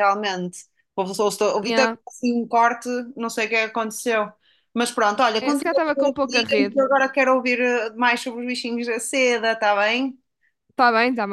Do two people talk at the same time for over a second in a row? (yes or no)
yes